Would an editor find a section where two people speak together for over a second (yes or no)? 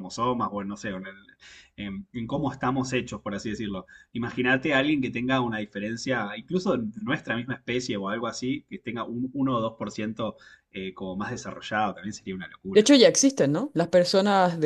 no